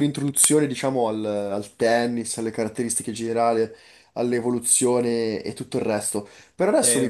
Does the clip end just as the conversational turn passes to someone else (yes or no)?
no